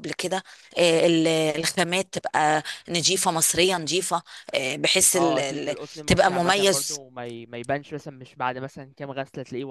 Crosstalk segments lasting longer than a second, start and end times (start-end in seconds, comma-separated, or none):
5.2-7.0